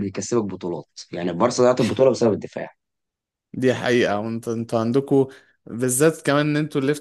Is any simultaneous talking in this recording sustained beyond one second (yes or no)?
no